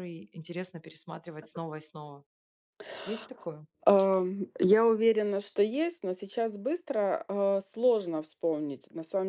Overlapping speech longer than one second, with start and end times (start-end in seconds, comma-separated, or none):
none